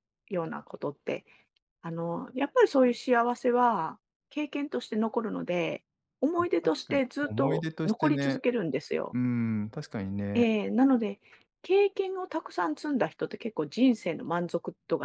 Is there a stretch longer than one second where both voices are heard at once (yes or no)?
yes